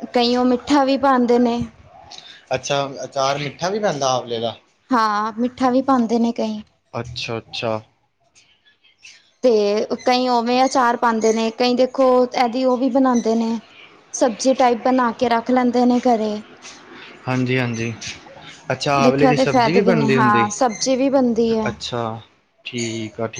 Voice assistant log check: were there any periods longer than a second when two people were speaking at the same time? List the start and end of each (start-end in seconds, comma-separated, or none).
19.0-20.5